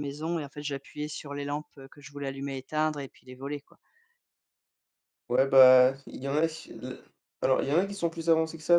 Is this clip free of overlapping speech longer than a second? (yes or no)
yes